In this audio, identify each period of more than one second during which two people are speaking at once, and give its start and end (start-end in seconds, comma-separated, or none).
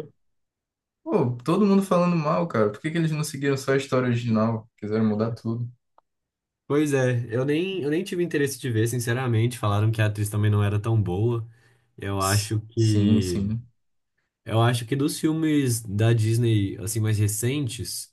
12.2-13.5